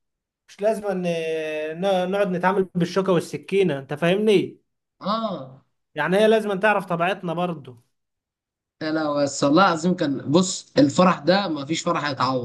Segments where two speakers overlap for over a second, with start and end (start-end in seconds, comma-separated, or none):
none